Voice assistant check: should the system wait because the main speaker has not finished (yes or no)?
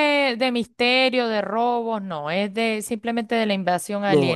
no